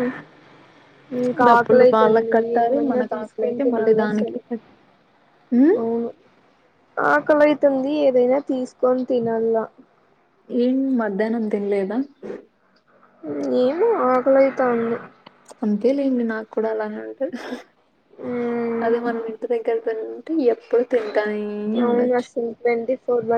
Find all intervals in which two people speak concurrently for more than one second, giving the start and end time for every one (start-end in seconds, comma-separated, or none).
1.5-4.4